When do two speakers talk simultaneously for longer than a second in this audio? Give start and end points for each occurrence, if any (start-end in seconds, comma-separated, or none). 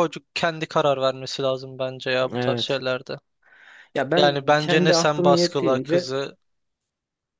4.1-6.1